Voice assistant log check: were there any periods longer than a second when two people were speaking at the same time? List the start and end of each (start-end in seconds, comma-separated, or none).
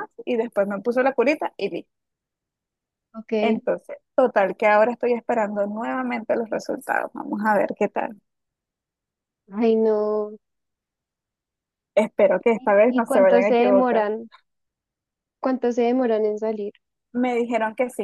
12.6-14.1